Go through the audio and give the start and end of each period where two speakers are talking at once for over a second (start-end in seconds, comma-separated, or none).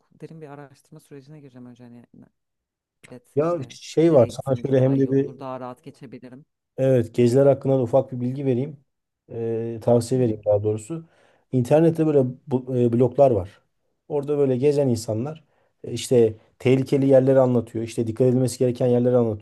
3.3-5.3